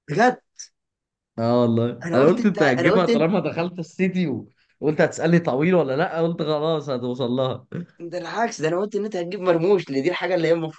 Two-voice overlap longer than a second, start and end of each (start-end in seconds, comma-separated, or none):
2.0-3.3